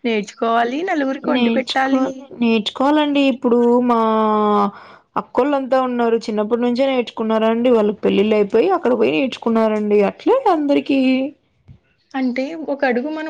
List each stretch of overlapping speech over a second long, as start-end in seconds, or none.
none